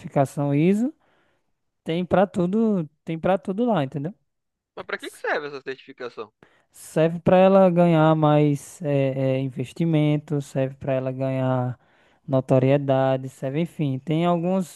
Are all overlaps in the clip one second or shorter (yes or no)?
yes